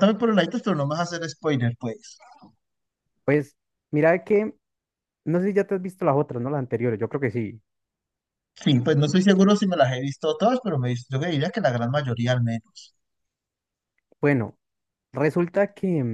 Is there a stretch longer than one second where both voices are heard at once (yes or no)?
no